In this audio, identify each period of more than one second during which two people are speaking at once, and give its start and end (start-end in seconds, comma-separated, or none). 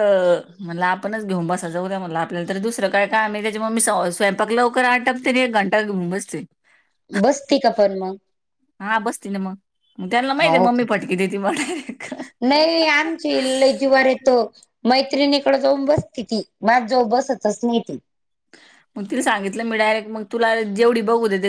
none